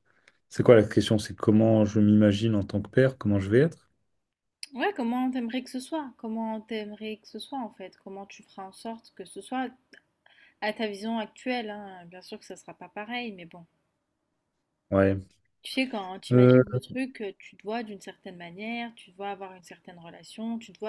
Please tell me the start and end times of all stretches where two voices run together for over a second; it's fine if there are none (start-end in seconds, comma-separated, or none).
none